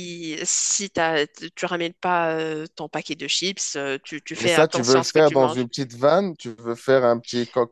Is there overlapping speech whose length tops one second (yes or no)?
yes